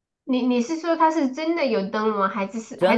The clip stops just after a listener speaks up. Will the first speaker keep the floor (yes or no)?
no